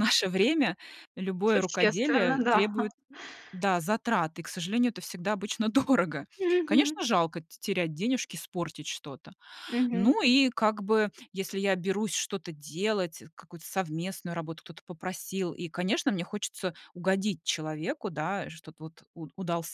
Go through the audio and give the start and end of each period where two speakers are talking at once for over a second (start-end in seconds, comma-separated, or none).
1.5-2.7